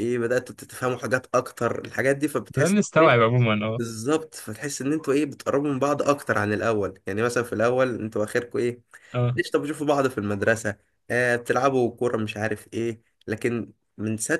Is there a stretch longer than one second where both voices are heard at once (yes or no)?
no